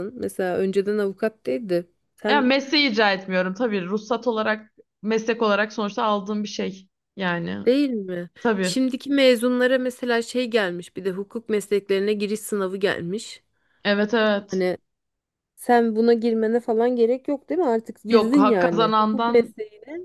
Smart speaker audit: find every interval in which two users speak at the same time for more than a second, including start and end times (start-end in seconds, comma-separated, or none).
18.1-19.5